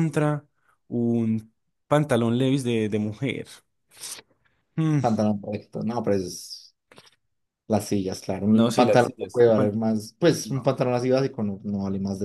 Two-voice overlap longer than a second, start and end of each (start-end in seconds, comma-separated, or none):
8.5-9.8